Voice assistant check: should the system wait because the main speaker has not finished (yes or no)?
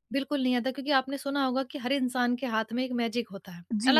no